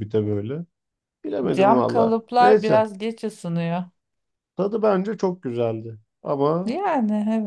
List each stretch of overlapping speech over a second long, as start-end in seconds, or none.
1.5-2.8